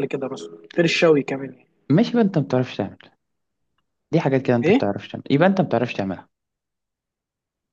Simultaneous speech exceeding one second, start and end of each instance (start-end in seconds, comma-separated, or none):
none